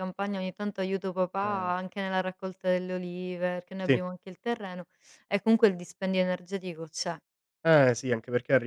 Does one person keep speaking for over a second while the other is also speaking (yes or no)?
no